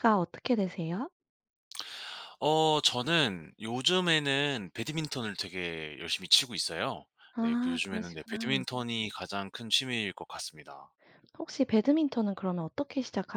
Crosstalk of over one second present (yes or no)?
yes